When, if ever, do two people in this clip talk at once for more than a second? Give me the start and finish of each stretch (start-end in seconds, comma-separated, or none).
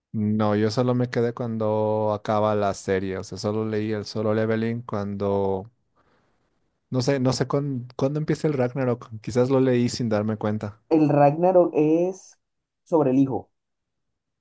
none